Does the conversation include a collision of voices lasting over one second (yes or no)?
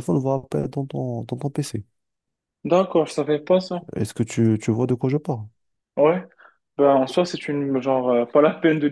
no